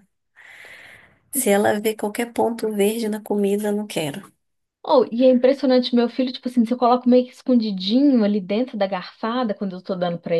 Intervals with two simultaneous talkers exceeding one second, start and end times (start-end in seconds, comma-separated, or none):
none